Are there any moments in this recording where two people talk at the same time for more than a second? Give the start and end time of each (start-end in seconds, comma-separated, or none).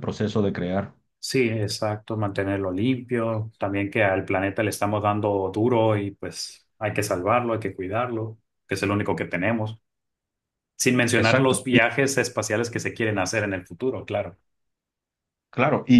none